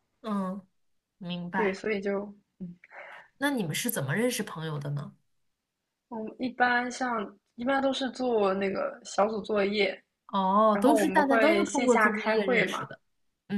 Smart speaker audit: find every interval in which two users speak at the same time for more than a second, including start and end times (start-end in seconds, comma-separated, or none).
10.7-12.9